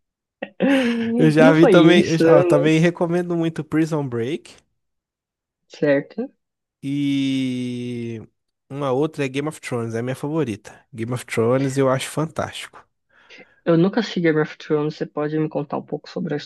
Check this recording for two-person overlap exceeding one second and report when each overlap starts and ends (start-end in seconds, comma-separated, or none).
1.4-2.7